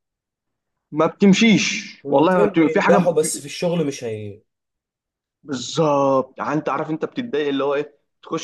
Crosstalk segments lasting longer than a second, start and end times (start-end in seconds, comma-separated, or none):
2.0-3.3